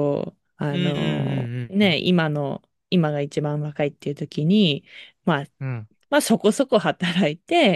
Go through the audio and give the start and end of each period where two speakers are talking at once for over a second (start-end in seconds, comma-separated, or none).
0.7-2.0